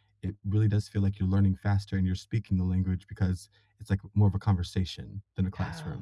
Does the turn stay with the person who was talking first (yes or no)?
no